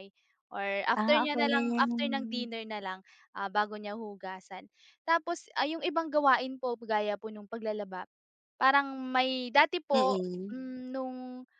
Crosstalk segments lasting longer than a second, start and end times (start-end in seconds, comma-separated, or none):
0.9-2.2